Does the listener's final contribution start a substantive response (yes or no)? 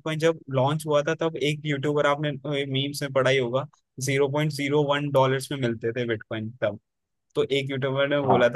no